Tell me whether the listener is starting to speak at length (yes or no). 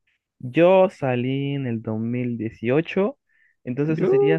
no